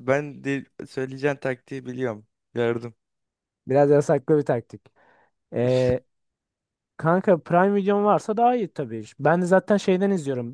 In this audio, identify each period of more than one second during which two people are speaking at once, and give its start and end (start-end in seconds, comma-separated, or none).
none